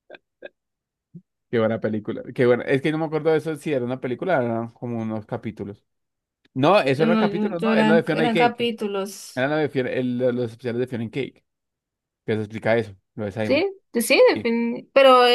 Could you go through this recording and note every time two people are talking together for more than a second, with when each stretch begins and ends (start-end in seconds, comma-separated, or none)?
7.0-8.7